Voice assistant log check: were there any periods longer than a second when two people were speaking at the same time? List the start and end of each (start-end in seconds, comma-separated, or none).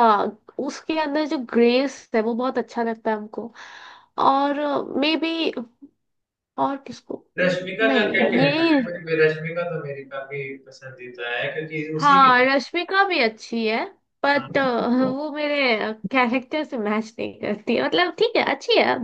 7.4-8.8